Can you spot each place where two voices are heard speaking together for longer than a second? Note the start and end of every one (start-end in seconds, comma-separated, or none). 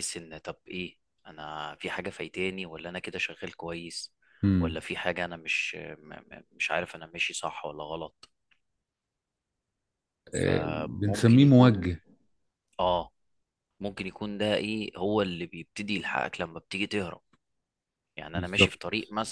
10.3-11.9